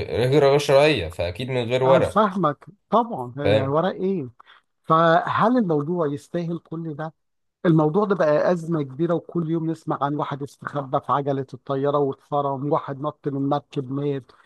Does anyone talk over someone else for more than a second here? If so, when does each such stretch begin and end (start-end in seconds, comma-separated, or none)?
none